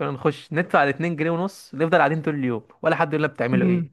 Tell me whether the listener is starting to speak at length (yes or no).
yes